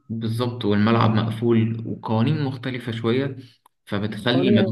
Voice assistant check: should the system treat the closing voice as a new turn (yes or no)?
no